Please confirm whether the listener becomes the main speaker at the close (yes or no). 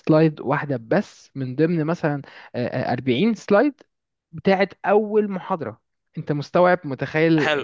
yes